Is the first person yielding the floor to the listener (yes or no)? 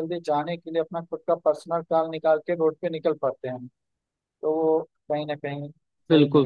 yes